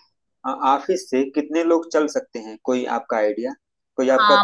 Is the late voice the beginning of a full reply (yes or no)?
yes